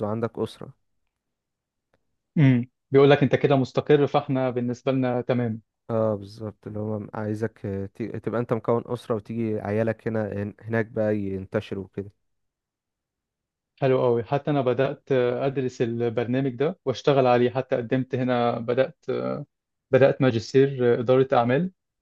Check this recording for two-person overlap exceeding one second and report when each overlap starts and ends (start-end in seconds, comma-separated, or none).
none